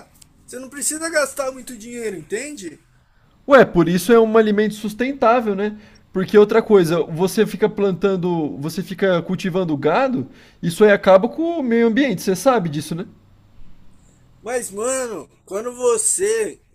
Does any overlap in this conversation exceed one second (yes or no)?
no